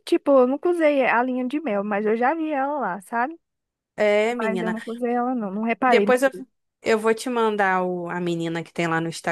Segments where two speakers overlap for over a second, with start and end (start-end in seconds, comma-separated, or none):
none